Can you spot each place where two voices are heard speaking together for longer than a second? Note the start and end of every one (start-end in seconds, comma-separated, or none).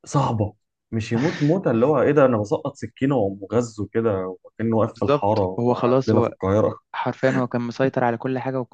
5.0-6.3